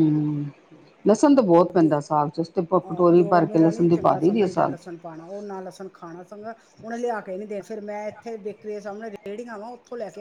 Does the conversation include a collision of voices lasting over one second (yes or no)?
yes